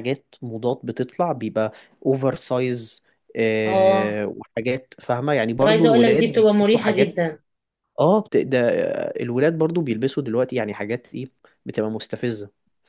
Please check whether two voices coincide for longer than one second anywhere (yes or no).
yes